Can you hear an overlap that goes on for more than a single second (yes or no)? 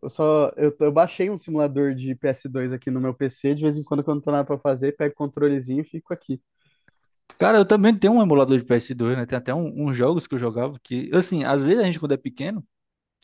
no